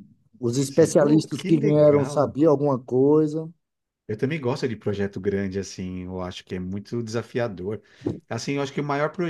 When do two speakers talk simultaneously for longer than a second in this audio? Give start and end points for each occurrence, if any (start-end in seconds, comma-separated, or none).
0.7-2.4